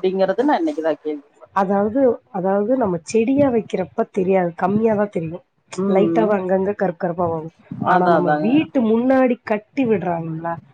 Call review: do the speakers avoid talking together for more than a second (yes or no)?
yes